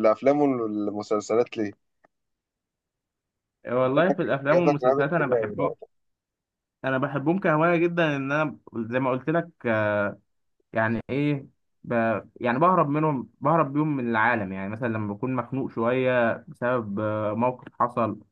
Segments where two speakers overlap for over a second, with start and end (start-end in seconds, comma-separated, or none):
4.5-5.7